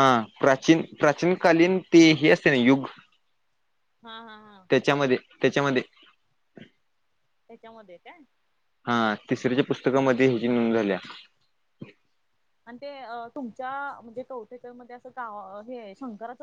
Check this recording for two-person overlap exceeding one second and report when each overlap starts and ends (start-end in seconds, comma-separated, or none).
none